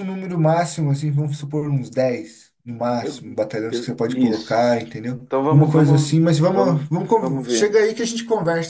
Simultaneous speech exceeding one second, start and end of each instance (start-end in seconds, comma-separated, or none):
3.0-4.6, 5.3-7.7